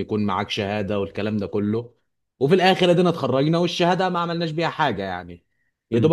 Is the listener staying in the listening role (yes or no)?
yes